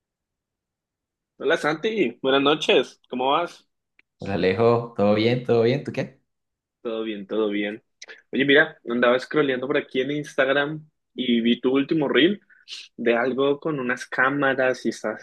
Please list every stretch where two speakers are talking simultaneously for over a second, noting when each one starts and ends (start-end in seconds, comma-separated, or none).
none